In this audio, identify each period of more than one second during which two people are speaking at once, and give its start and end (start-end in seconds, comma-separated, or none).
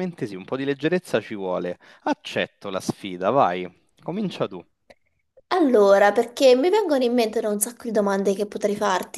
none